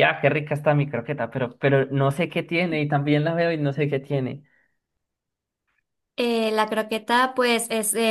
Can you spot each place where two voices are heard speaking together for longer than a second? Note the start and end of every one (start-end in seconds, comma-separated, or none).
none